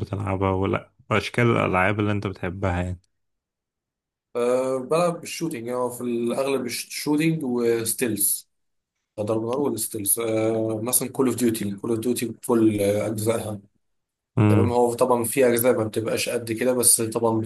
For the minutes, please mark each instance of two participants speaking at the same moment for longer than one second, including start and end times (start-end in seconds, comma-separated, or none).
none